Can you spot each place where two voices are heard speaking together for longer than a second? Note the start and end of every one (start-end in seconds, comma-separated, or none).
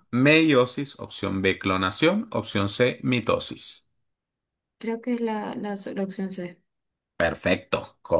none